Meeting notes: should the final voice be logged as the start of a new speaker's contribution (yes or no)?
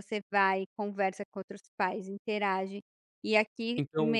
no